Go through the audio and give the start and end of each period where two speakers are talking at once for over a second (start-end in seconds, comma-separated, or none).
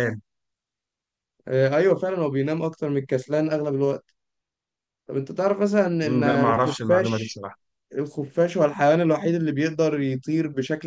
6.0-7.4